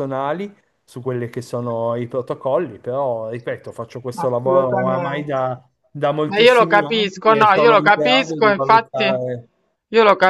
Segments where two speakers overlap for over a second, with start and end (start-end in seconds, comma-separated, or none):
4.2-5.4, 6.3-9.2